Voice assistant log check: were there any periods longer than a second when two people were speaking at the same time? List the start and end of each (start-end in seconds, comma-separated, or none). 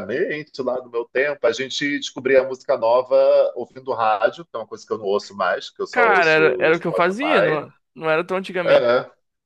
5.9-7.6